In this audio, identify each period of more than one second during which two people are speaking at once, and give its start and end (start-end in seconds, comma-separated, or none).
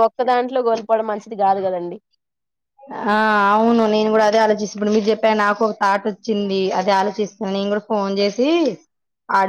none